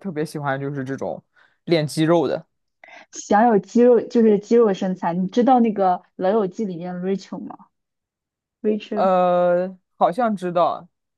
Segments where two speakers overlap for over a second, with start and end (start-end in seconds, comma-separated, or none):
none